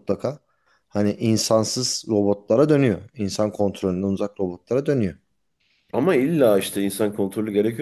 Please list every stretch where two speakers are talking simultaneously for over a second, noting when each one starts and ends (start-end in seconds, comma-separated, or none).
none